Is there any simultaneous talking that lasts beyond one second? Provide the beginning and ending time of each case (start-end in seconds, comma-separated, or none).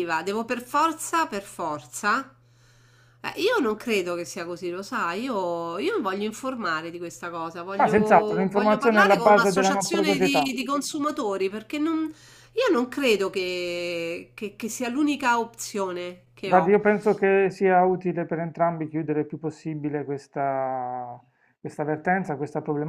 7.8-10.5